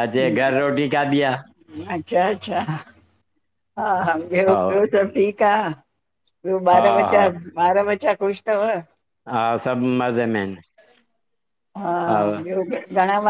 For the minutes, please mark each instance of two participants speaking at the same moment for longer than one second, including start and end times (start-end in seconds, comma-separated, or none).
none